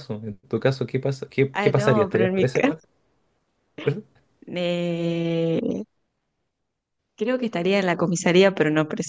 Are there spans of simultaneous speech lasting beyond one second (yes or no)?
yes